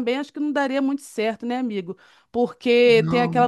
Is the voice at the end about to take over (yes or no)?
no